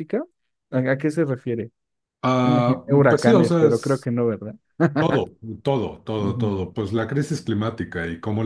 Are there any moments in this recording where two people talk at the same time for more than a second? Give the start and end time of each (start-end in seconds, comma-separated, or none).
2.4-4.1